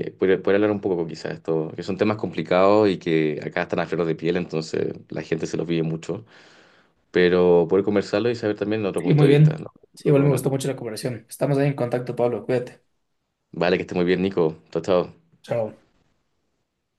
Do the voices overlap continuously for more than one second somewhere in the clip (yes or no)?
yes